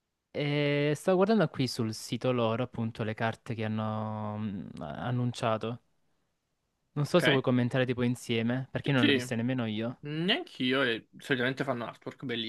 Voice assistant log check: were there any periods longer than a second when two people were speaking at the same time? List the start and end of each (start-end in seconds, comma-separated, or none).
none